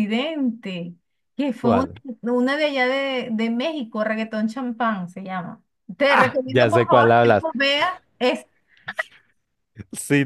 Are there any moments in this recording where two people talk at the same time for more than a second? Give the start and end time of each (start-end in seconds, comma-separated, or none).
6.1-7.5